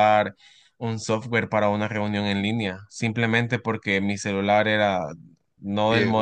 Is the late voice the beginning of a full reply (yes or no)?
no